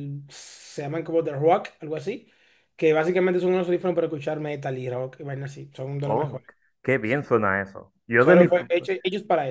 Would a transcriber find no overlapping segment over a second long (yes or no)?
yes